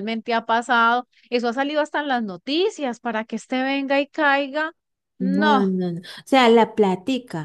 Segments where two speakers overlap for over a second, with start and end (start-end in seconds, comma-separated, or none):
none